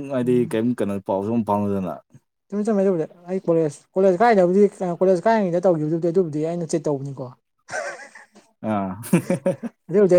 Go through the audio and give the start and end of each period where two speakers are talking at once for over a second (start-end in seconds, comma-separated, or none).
none